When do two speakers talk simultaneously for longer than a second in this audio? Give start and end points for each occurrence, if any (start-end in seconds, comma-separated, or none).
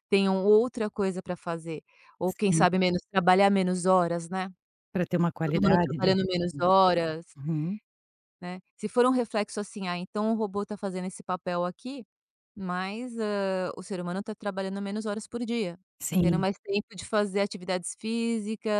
5.4-6.7